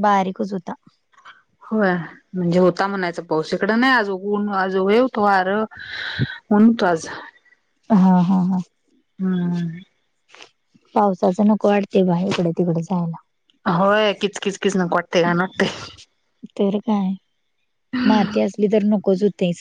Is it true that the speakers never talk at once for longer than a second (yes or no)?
yes